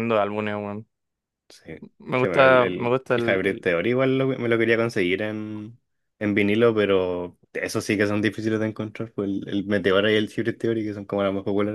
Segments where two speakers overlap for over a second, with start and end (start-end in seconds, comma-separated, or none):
2.2-3.7